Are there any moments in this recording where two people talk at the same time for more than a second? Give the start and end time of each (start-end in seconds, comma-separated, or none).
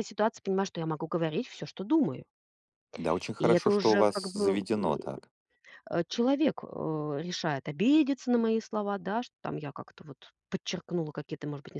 3.4-5.0